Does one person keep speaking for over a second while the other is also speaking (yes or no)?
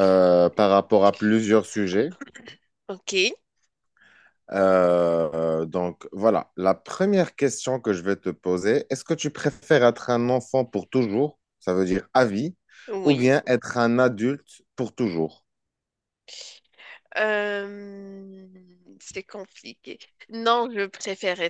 no